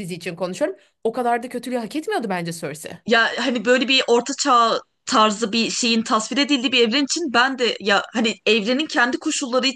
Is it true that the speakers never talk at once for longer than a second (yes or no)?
yes